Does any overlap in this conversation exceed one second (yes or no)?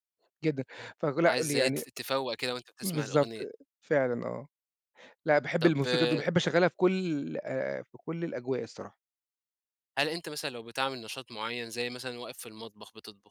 no